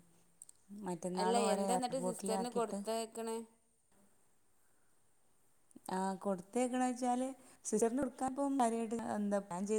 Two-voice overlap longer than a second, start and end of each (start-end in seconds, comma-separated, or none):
1.2-2.8